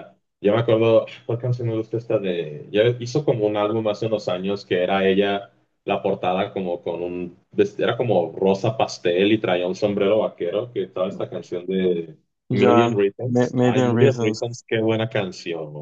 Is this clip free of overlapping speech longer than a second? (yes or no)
no